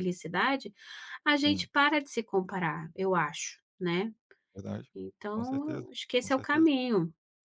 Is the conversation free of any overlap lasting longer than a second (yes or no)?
no